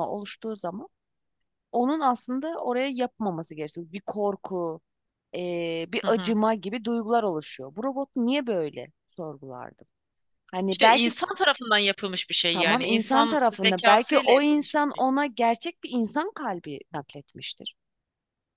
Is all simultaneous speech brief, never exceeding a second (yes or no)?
no